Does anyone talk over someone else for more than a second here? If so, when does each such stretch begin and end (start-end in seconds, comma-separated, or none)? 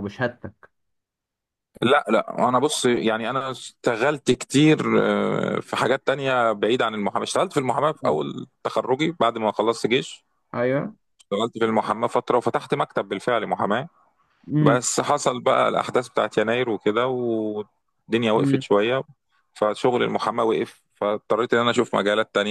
none